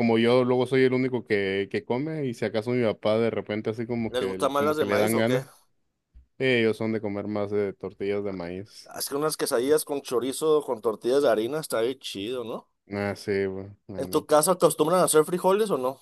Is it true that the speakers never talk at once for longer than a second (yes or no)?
no